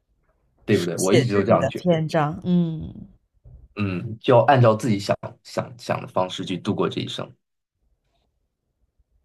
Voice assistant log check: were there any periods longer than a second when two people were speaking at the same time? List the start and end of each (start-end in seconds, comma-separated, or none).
0.7-2.0